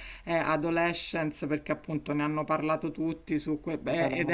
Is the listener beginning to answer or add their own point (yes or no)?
no